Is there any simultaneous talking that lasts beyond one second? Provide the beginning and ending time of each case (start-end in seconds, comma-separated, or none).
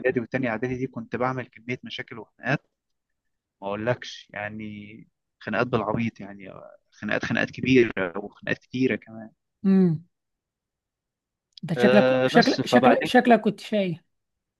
11.8-13.1